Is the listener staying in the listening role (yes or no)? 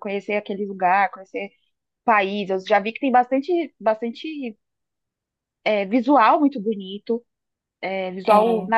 yes